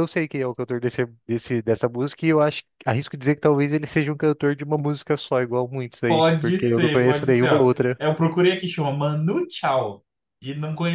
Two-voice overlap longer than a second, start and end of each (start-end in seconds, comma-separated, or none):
6.1-8.0